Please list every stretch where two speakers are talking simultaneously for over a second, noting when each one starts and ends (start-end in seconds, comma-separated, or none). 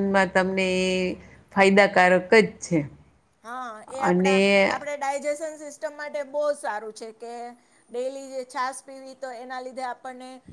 none